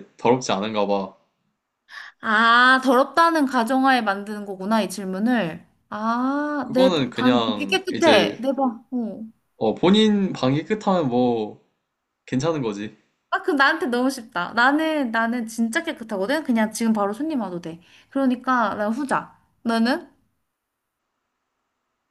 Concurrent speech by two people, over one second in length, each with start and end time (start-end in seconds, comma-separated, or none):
6.6-8.4